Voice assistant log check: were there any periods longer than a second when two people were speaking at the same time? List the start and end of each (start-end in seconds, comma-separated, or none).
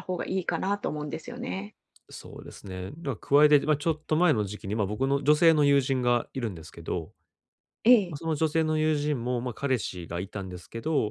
none